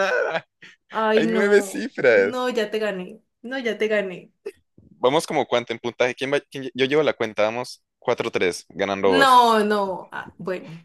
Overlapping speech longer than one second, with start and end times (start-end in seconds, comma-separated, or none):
1.1-2.5